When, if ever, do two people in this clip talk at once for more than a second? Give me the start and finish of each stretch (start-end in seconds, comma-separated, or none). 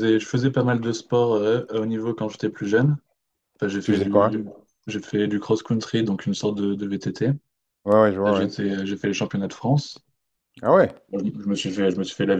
none